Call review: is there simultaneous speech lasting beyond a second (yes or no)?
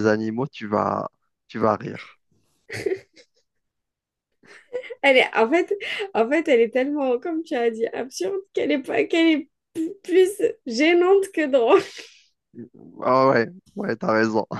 no